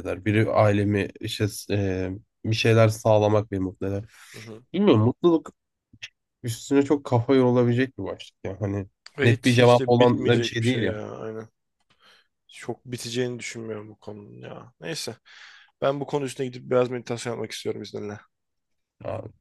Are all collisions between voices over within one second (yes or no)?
no